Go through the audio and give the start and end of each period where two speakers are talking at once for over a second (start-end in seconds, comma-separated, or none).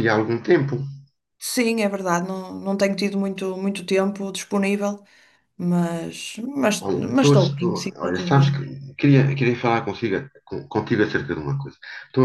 6.9-8.7